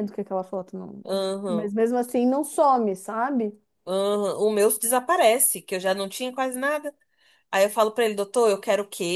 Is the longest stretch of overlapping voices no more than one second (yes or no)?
yes